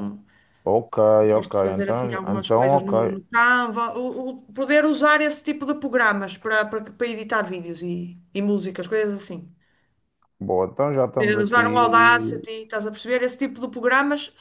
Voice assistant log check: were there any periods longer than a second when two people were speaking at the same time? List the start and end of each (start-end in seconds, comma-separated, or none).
1.4-3.2, 11.2-12.4